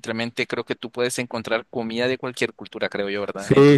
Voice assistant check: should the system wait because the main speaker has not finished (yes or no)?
no